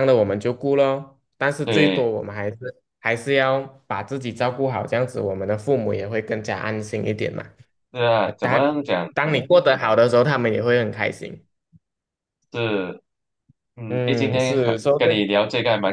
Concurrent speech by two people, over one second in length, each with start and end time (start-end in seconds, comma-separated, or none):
13.9-15.2